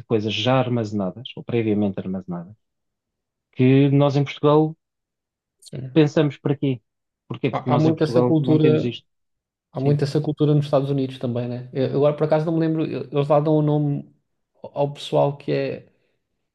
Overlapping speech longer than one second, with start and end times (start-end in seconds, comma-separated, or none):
7.5-8.9